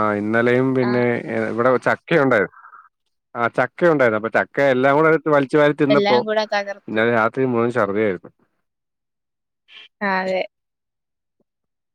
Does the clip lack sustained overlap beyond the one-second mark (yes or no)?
yes